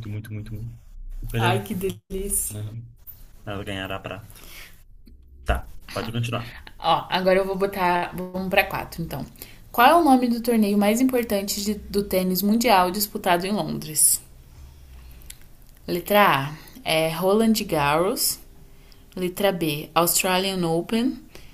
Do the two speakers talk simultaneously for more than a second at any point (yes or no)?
no